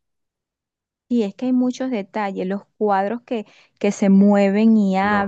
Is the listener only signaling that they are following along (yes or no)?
no